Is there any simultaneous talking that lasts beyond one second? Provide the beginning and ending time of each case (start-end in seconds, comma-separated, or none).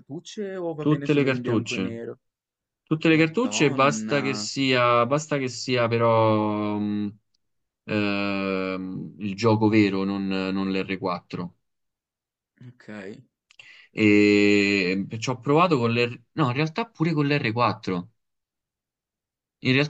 0.8-2.0, 3.1-4.5